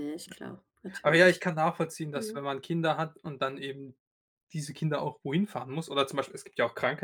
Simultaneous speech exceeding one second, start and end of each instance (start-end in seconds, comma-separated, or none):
none